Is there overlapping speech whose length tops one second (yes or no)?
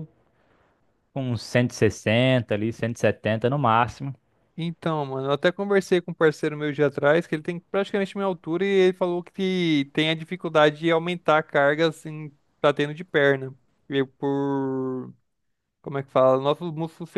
no